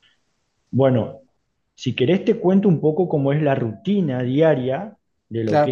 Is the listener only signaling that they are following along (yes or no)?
no